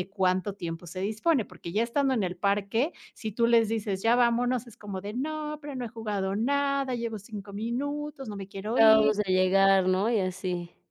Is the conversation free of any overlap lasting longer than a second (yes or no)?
yes